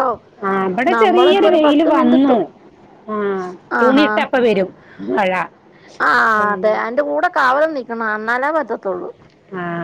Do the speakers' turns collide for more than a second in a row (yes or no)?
yes